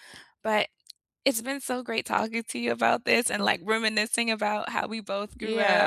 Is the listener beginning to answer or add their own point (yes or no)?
yes